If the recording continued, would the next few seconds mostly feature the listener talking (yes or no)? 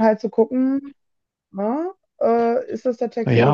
yes